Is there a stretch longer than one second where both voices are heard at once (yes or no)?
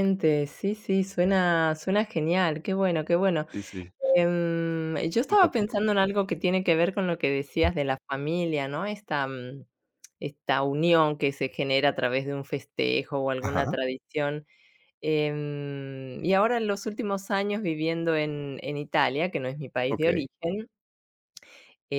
no